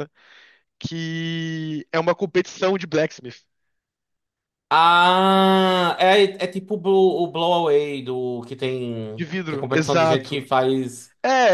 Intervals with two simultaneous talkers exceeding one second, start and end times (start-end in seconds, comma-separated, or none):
9.2-10.5